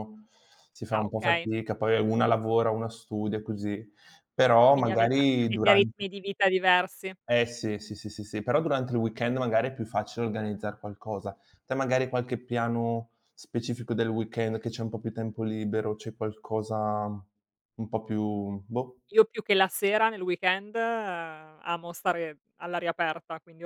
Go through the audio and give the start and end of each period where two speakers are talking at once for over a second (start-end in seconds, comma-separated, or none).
4.7-6.1